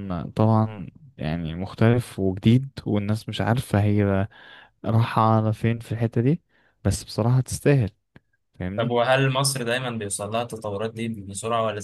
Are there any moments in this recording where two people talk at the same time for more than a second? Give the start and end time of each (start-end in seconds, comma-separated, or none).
none